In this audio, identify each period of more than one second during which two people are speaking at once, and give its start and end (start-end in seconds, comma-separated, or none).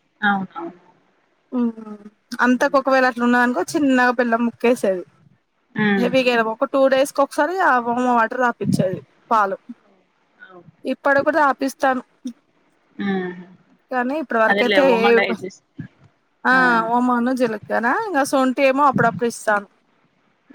none